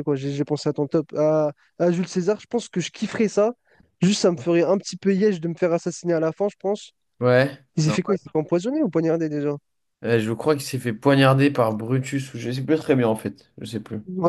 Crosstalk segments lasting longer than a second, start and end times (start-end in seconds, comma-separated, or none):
none